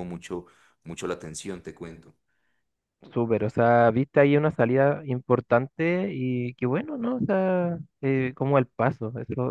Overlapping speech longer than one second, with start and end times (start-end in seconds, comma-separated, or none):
none